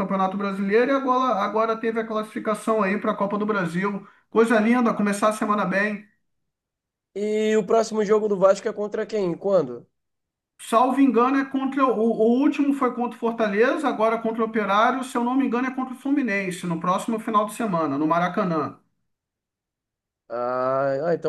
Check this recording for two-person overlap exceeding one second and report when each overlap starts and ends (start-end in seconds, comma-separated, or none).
none